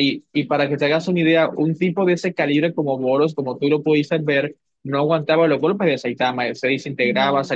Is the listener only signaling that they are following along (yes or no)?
yes